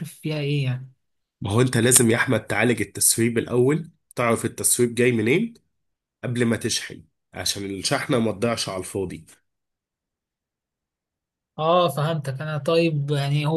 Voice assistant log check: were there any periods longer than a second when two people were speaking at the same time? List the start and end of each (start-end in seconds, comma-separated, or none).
none